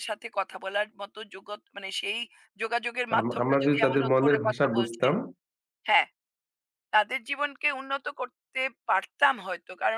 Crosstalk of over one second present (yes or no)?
yes